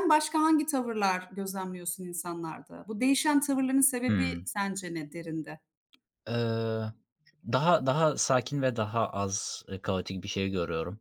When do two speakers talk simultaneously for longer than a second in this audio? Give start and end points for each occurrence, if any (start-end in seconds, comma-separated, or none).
none